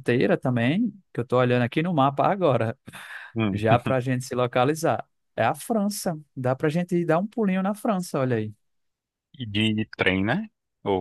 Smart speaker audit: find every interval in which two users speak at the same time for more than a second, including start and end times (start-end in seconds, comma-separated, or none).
none